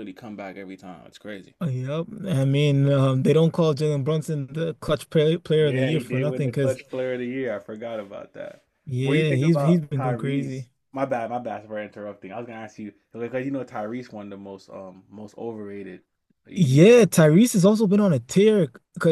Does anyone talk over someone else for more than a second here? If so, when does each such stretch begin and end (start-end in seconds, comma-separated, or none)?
5.6-6.8, 9.0-10.7